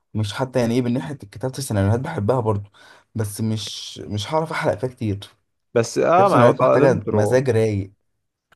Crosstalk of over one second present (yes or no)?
yes